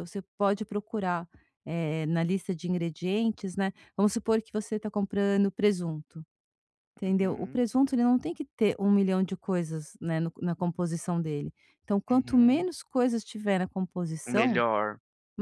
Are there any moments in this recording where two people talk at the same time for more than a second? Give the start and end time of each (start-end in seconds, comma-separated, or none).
none